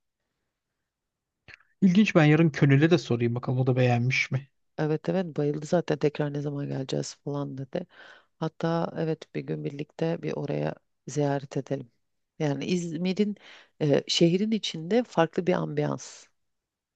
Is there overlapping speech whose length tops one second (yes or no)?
no